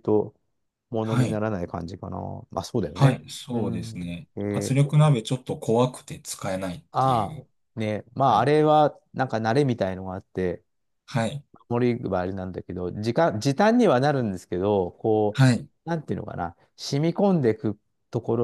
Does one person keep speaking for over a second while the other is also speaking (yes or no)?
yes